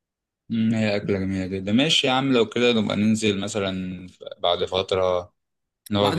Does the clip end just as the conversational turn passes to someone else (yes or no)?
yes